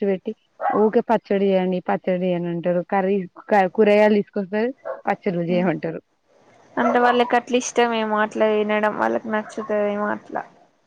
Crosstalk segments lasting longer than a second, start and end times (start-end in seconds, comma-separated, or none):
none